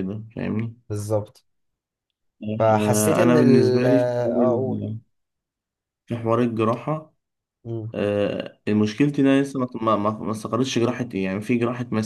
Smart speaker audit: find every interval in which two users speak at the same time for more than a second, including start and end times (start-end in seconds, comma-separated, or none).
2.8-4.8